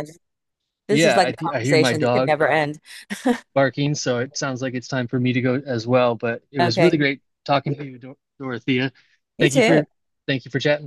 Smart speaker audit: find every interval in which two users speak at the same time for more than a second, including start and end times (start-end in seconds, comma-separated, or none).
0.9-2.3